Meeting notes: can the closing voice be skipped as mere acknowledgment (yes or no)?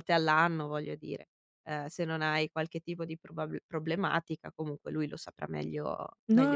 no